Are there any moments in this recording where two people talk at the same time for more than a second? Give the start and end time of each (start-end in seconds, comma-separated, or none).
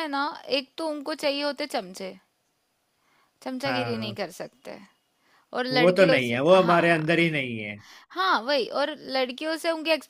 5.7-7.3